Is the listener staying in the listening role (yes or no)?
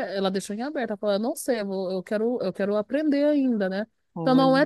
yes